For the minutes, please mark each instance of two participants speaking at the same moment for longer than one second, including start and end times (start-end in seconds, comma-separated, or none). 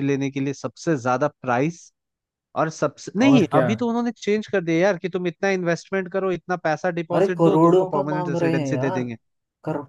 7.1-9.0